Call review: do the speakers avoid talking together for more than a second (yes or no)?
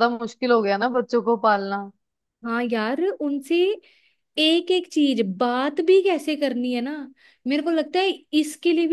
yes